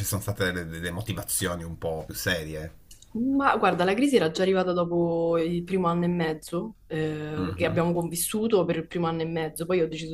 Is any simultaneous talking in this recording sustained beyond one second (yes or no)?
no